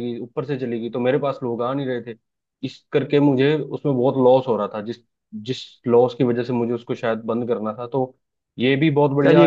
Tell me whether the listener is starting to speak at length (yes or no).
yes